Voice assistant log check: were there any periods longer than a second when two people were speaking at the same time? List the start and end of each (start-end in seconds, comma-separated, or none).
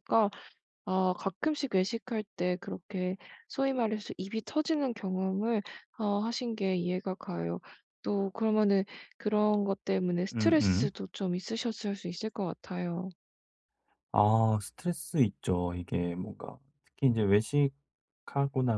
none